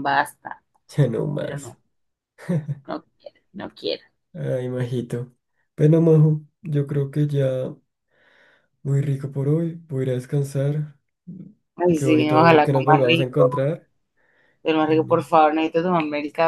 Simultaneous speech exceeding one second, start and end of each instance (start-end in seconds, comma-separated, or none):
11.9-13.6